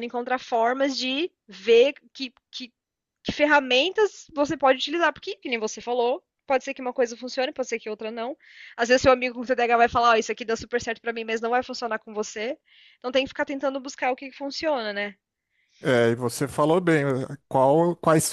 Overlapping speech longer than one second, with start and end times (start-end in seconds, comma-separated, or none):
none